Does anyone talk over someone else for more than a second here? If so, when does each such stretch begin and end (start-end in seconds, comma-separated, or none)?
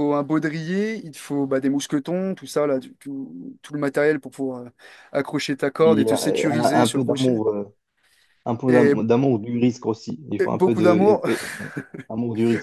5.8-7.4